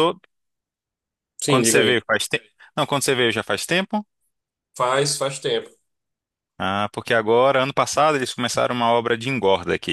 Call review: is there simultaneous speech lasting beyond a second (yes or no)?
no